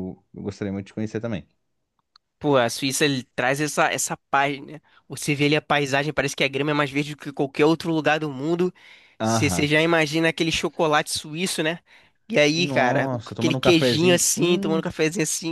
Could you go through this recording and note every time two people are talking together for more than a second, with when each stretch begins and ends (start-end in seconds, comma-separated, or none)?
12.5-14.8